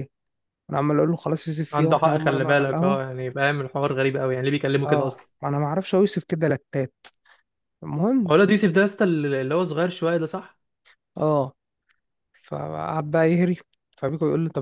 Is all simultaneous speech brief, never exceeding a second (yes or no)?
no